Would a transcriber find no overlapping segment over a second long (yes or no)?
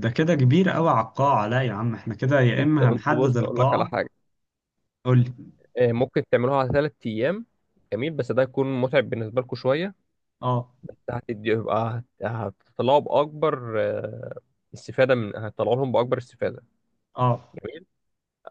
no